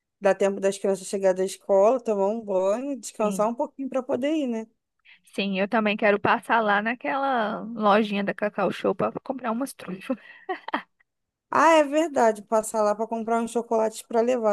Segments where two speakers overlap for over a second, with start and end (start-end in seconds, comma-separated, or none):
none